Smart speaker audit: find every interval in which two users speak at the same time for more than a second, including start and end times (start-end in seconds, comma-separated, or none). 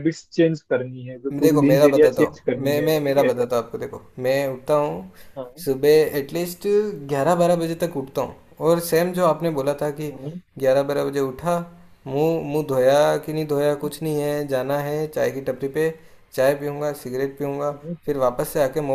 1.4-3.3